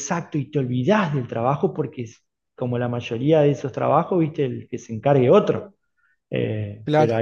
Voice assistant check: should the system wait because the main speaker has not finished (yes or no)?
yes